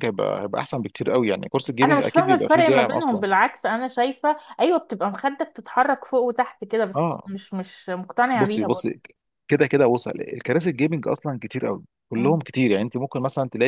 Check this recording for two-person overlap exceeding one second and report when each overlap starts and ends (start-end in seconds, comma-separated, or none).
1.8-3.3